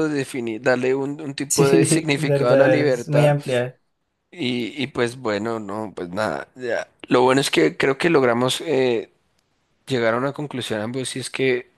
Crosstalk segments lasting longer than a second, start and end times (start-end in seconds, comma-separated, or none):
1.5-3.4